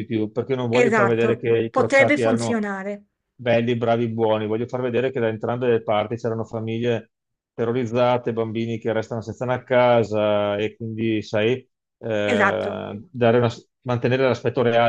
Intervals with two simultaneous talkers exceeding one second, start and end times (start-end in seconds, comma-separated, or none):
0.7-2.6